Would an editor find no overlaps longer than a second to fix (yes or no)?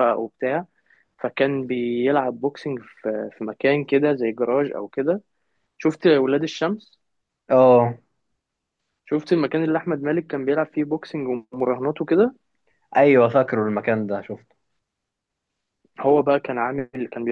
yes